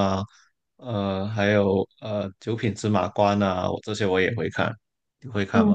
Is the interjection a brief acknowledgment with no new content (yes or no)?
no